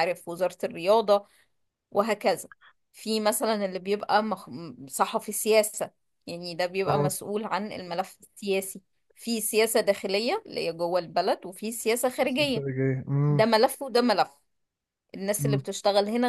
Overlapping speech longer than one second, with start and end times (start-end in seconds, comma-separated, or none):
none